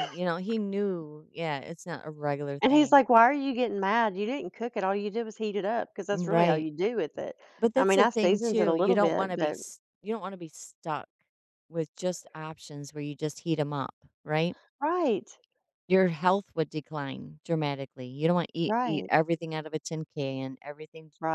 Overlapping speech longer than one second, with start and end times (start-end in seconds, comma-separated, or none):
7.8-9.6